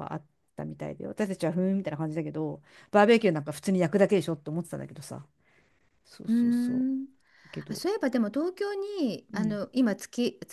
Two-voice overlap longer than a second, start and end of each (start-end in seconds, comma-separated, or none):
none